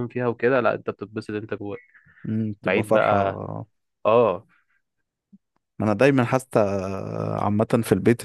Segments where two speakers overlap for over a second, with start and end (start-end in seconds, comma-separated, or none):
none